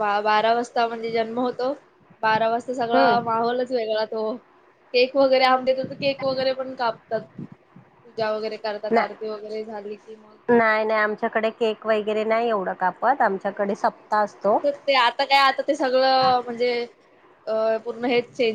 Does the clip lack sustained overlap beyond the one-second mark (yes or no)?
yes